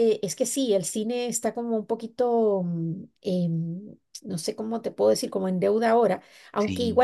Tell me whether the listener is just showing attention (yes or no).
yes